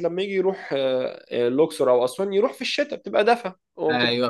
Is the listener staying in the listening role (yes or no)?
no